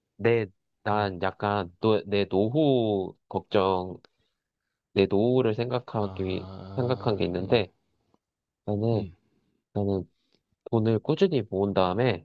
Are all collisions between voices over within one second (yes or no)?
no